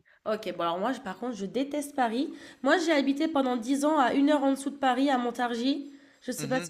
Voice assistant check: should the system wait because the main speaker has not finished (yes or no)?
no